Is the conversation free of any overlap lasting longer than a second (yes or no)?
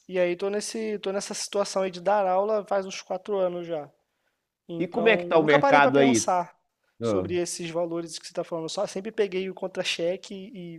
no